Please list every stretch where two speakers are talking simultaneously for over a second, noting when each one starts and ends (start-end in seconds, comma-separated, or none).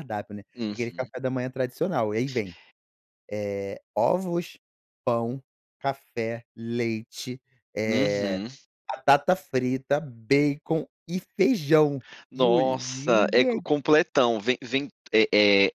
12.3-13.7